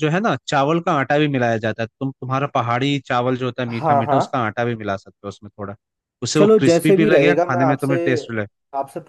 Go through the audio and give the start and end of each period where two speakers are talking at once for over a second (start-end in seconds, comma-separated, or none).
6.4-8.0